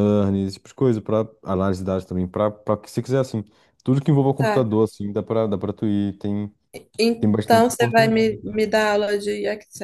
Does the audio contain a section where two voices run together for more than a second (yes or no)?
yes